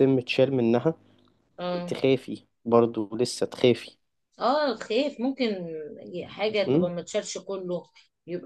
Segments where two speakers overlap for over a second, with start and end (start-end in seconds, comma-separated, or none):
none